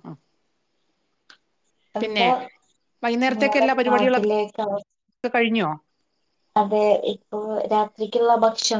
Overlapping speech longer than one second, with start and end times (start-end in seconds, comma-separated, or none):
3.4-4.7